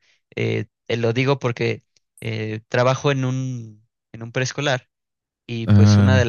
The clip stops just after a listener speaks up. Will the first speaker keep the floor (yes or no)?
yes